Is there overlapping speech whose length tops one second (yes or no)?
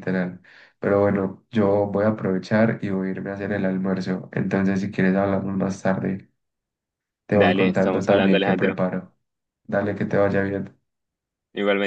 yes